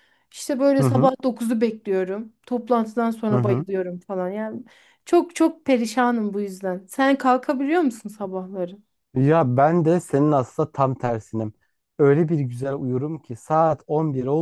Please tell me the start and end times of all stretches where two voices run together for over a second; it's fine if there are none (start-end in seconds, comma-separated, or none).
none